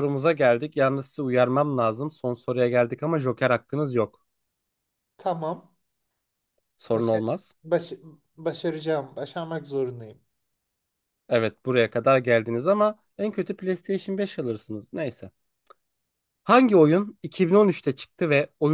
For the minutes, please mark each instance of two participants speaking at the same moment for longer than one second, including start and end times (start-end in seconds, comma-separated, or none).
none